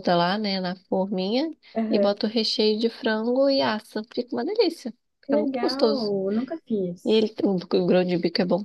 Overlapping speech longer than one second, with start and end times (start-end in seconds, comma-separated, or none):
none